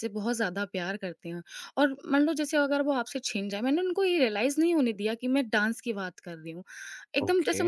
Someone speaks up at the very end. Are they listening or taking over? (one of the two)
listening